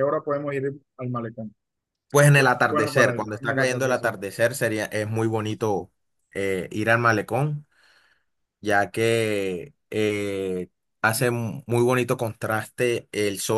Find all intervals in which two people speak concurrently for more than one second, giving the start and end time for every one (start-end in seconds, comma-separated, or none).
2.7-4.1